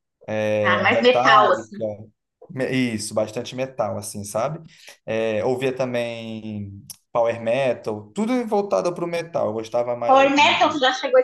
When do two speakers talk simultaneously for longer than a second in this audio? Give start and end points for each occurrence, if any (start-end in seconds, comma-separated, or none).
0.6-1.8